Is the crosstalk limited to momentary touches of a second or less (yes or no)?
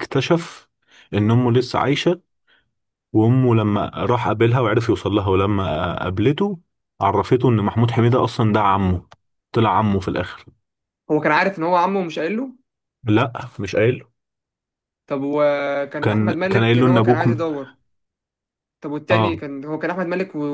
no